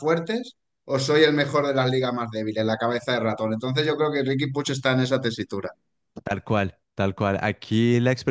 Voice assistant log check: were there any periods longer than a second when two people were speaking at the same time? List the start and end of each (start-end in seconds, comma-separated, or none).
none